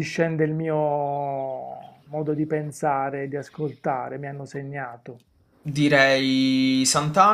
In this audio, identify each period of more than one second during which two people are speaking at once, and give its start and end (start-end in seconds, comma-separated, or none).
none